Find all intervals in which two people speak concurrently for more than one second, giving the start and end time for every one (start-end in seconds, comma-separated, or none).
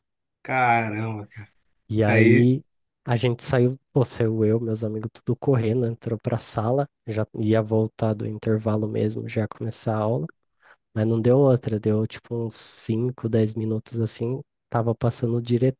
none